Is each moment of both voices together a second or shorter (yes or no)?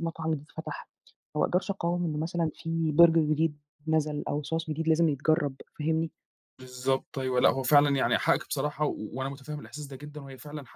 yes